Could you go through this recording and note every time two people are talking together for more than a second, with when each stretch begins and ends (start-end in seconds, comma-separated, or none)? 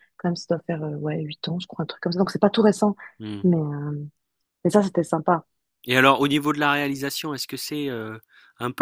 none